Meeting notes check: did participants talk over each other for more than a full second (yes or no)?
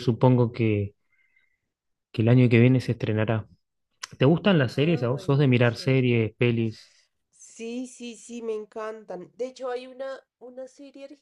yes